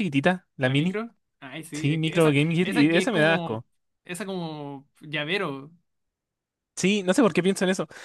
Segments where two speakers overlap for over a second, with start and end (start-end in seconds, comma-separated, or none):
1.7-3.6